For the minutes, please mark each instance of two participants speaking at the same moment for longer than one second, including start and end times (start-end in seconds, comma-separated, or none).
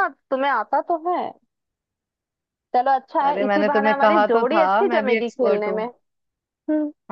3.3-5.8